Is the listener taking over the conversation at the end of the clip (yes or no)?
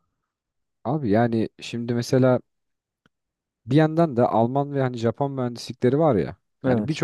no